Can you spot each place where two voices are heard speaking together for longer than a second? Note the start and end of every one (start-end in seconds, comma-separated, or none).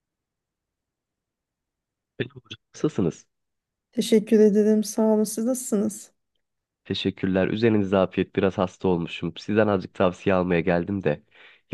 none